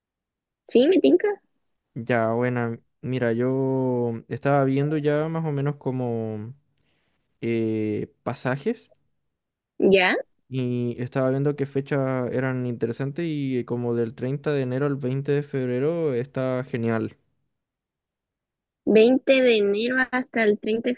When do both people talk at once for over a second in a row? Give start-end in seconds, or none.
none